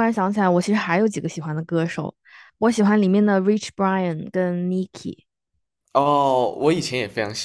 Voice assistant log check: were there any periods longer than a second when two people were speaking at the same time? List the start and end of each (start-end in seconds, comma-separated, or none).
none